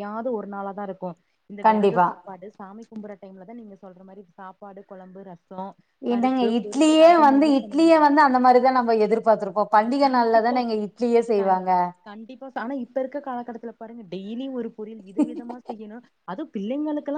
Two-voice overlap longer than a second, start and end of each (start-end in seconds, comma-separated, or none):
6.1-8.0